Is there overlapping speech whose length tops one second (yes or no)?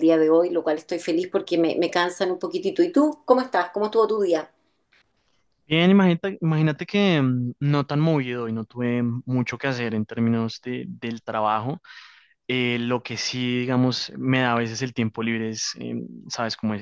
no